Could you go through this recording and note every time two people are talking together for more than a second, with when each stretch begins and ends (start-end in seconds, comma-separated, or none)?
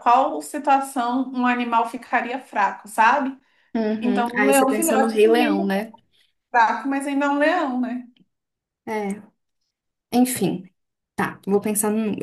4.0-5.7